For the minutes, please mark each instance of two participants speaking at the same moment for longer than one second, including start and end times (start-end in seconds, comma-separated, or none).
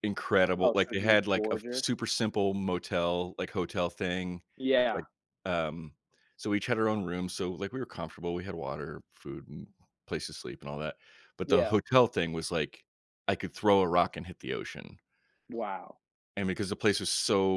0.6-1.9